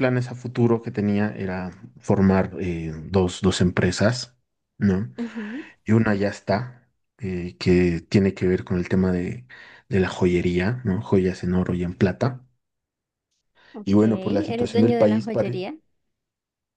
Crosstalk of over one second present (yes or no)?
yes